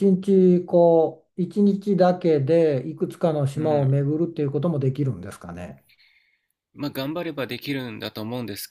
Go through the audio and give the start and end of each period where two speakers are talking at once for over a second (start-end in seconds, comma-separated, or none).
none